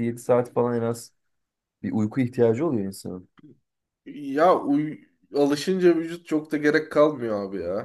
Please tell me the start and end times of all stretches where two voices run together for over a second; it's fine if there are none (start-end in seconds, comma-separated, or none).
none